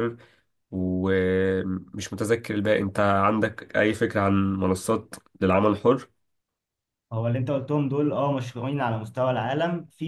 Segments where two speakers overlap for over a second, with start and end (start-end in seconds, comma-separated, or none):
none